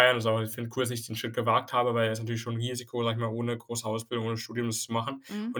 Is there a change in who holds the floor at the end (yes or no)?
no